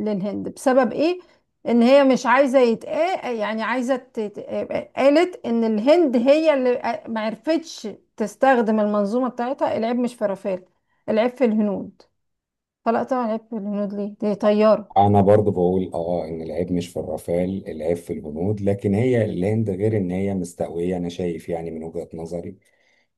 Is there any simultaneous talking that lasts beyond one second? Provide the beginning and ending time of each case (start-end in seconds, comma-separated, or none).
none